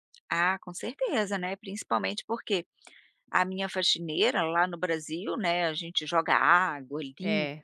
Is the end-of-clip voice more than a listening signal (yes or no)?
no